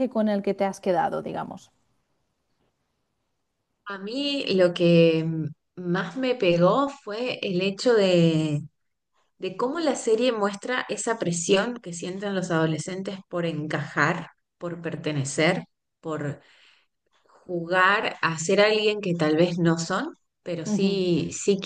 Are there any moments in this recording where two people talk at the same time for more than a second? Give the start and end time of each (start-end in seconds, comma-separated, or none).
none